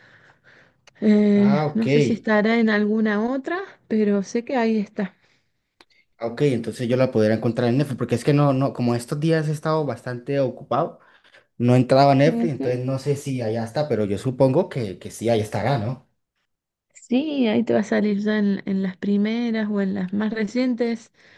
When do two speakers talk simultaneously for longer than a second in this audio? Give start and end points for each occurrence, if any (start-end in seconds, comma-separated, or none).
none